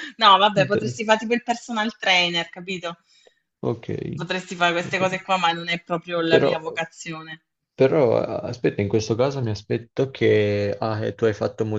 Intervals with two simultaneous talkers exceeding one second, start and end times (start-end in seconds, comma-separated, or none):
none